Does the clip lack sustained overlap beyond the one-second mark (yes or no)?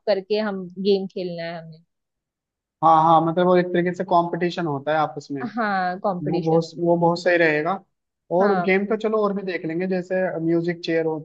yes